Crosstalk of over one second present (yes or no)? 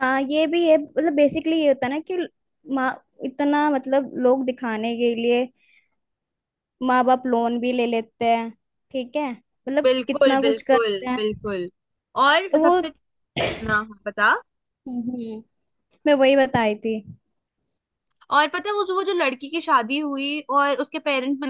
yes